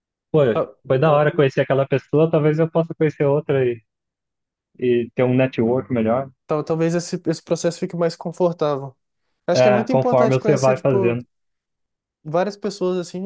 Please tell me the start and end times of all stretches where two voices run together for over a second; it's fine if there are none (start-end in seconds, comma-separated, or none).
9.5-11.2